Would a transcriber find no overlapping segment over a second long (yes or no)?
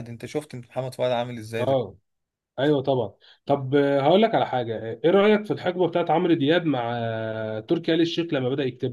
yes